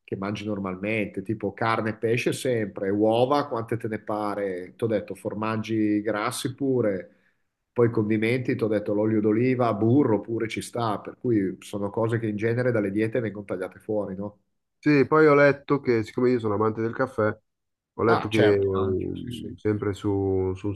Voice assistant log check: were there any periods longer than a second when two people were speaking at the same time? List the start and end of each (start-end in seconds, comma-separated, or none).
18.1-19.6